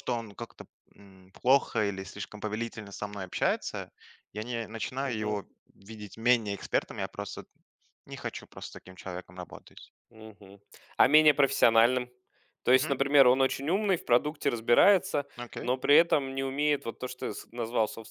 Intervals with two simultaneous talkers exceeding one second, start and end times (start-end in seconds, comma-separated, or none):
none